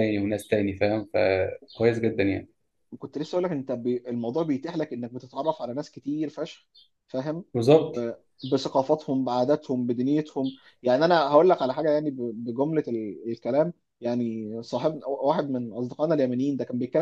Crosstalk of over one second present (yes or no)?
no